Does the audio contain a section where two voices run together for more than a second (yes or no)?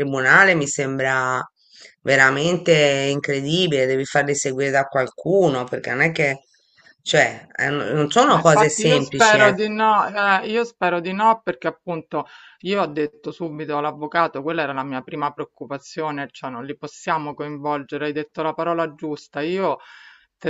yes